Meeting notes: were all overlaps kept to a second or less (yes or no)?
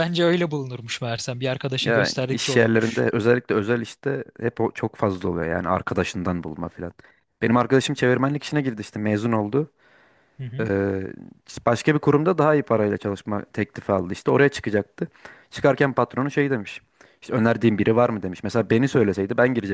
no